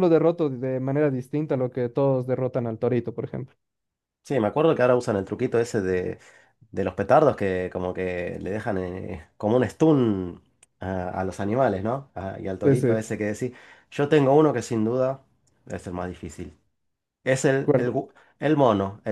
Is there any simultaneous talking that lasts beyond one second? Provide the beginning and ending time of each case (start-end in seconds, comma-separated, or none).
none